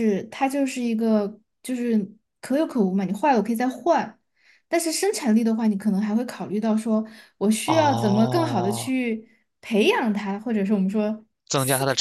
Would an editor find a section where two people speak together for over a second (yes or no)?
yes